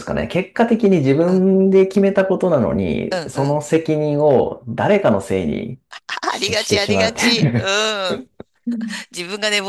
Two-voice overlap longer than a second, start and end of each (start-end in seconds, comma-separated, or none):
6.3-7.6